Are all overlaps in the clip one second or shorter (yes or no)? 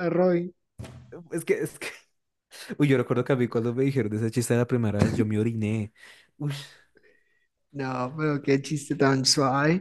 yes